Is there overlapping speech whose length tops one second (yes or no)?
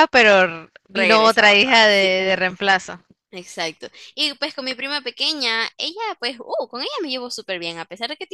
yes